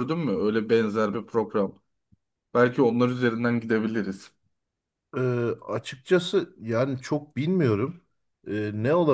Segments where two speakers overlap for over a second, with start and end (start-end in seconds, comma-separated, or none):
none